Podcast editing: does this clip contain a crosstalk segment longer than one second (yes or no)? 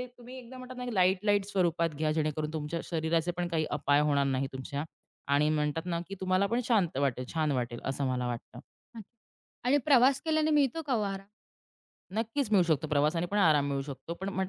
no